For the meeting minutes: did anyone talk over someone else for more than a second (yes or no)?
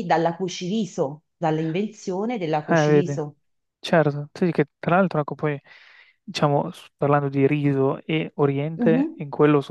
no